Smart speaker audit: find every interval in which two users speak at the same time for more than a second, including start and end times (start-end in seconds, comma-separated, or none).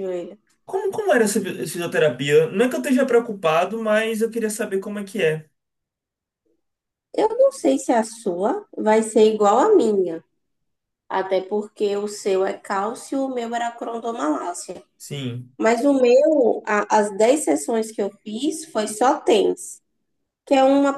none